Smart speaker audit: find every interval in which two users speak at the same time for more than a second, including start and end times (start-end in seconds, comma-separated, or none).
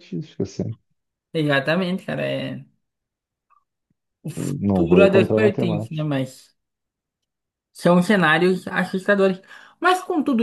4.4-6.0